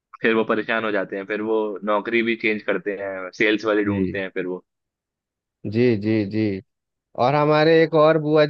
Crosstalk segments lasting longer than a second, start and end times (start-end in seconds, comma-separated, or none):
none